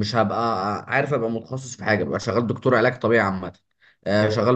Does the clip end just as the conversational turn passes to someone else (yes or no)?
no